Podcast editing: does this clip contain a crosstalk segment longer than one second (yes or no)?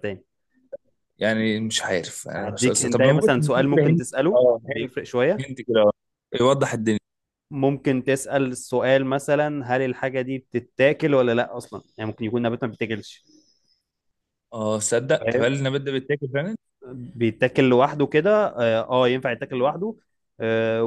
yes